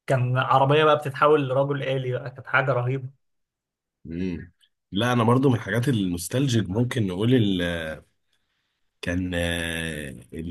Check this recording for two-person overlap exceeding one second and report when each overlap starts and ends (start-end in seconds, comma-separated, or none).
none